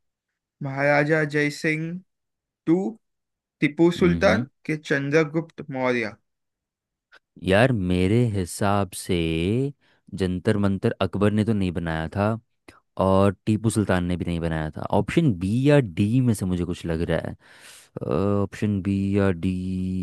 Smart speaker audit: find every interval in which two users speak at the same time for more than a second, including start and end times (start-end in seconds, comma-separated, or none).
none